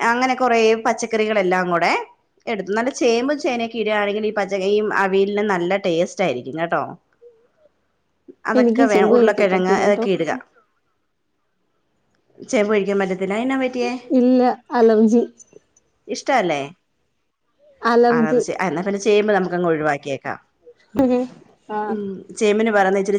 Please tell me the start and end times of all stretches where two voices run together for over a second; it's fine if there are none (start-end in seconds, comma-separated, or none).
8.6-10.0